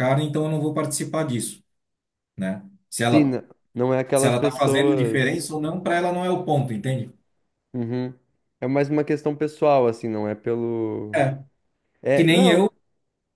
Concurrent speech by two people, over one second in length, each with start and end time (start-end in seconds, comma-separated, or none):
4.1-5.5